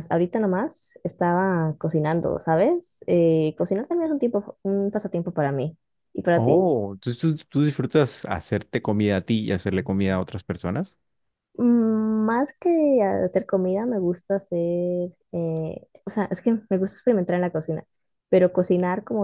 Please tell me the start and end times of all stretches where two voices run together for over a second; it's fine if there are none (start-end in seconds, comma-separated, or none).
none